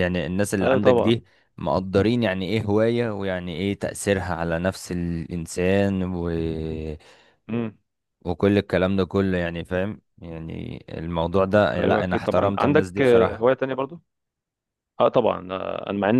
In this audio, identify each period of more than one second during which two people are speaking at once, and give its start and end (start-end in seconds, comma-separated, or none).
11.8-13.4